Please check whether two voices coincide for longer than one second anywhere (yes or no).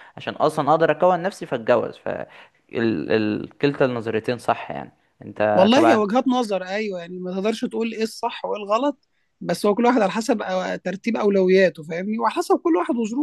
no